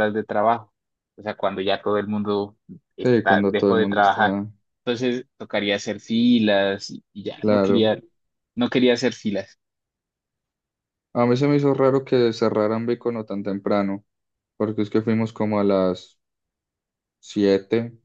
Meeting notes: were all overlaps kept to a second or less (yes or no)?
no